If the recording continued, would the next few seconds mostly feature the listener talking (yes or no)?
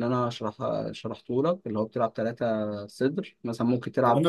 yes